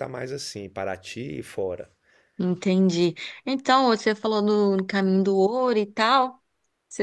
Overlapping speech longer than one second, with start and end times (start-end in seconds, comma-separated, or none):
none